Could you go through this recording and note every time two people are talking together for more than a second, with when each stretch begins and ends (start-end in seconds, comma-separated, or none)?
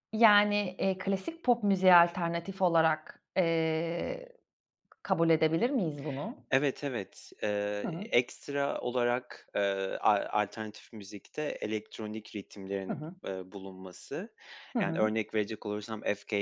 none